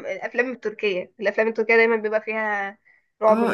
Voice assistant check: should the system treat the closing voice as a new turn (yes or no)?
yes